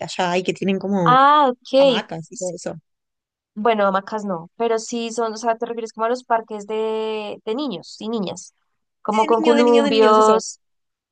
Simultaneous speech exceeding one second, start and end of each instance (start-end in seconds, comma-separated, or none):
9.1-10.4